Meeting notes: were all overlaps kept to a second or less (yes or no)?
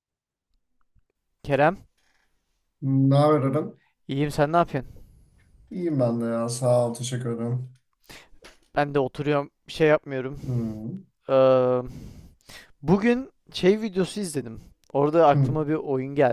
yes